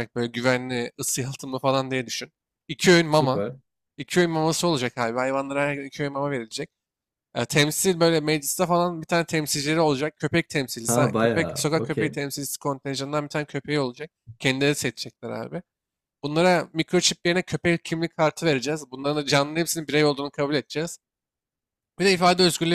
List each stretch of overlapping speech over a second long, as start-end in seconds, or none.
10.9-12.2